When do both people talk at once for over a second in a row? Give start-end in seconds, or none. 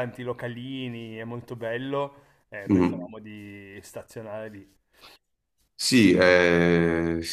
none